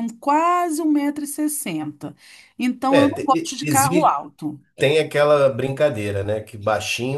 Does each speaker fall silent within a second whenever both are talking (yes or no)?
no